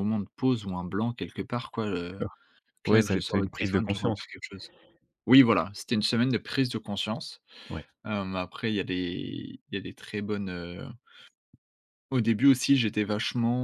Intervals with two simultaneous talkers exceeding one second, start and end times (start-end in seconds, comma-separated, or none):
2.9-4.3